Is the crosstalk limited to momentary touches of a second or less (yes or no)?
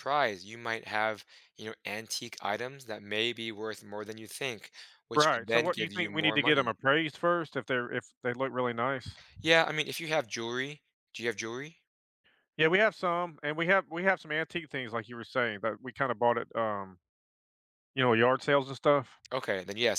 no